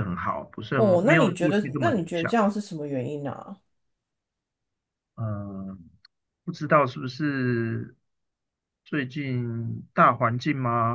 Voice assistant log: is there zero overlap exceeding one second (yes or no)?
no